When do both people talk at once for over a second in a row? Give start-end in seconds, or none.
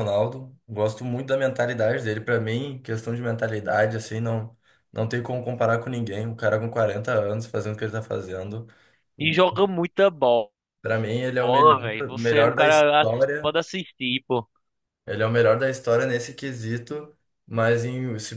11.4-13.6